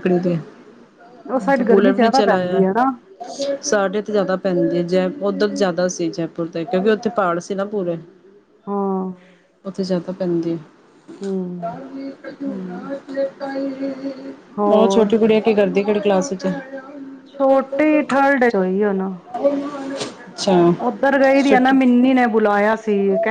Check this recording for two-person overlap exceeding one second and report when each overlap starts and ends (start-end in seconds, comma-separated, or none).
1.3-2.6